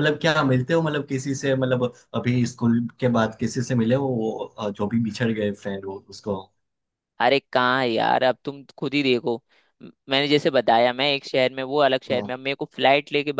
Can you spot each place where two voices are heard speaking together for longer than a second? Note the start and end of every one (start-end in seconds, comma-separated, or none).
none